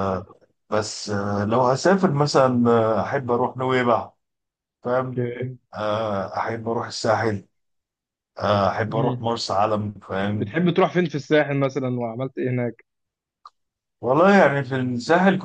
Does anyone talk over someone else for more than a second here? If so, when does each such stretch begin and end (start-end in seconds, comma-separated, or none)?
none